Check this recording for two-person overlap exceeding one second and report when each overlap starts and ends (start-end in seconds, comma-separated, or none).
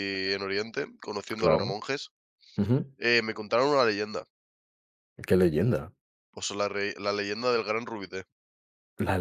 none